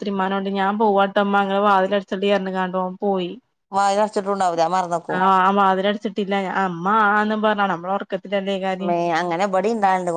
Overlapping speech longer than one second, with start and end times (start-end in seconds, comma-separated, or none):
none